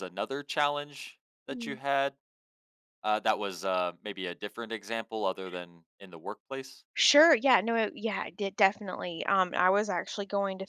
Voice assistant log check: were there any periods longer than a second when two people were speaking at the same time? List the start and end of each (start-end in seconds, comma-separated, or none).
none